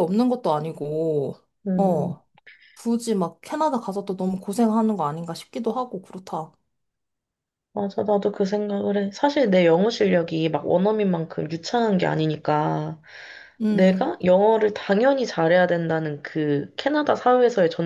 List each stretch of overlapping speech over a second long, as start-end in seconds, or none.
none